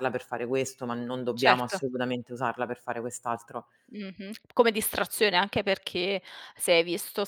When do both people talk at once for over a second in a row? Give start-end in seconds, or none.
none